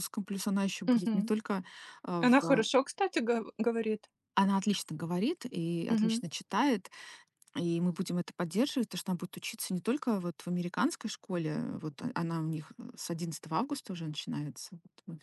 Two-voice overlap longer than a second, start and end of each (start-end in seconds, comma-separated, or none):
none